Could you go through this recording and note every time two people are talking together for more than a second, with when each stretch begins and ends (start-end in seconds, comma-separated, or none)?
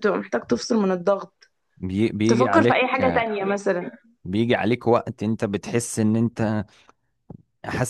none